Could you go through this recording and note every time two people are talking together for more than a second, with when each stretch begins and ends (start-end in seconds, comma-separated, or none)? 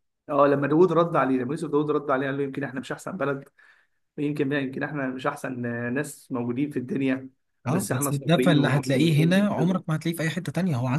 7.7-9.8